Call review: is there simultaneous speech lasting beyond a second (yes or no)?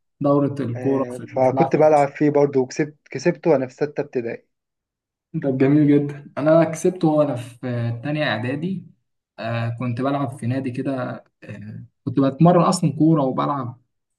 yes